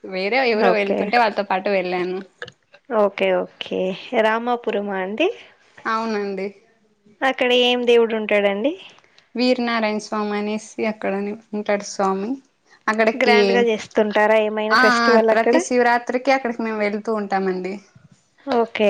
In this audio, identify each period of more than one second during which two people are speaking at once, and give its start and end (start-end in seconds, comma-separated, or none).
none